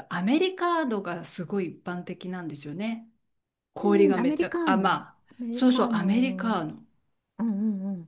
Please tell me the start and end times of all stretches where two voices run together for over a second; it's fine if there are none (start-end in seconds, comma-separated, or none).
3.8-6.6